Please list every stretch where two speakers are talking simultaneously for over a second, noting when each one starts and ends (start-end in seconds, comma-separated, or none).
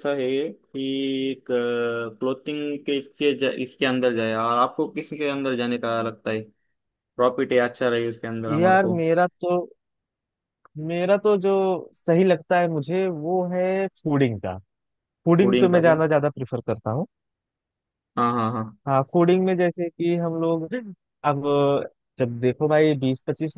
none